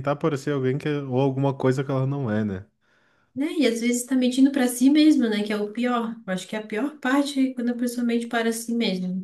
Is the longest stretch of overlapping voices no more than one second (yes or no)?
yes